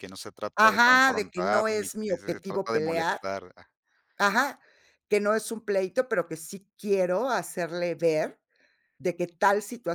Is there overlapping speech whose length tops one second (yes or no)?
yes